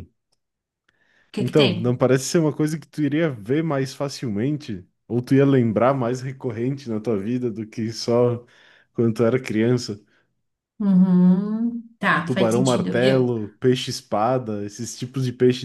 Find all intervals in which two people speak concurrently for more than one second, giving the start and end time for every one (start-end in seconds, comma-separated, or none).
12.0-13.3